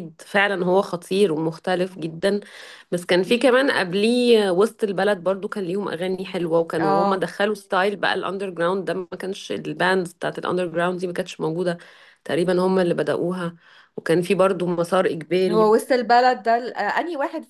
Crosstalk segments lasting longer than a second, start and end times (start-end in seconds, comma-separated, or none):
none